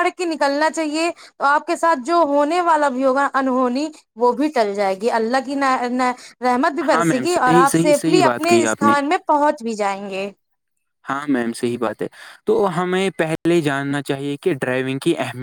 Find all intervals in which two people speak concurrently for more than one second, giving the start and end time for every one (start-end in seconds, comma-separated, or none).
6.9-8.9